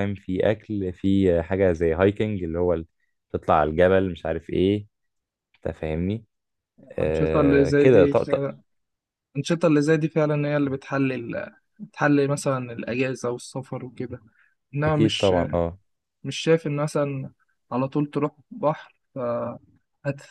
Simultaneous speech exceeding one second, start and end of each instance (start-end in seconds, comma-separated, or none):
7.0-8.4